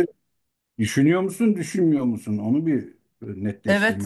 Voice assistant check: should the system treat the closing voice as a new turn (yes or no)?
yes